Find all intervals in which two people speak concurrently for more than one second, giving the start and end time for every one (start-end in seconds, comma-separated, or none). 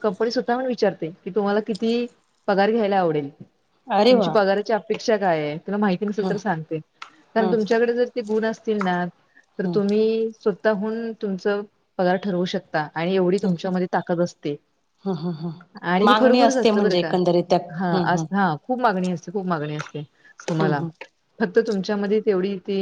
15.8-17.1